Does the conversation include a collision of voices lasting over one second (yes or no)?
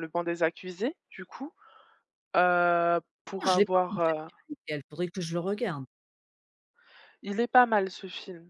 no